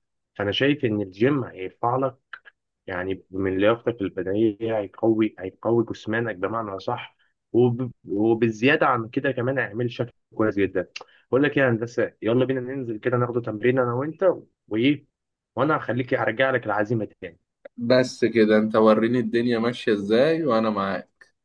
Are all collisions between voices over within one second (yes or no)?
yes